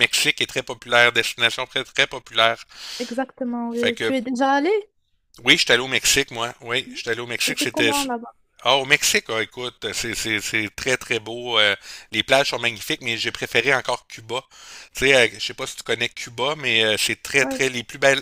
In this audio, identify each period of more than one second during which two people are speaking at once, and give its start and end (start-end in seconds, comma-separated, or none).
none